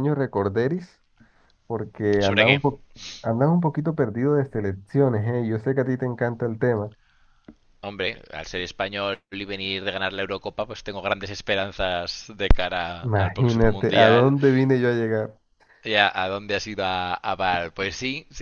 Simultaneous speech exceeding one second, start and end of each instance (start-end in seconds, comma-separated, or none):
13.0-14.3